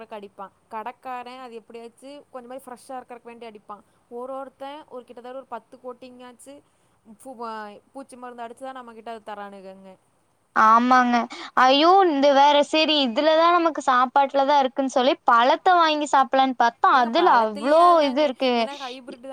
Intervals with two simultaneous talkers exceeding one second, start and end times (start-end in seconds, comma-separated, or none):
none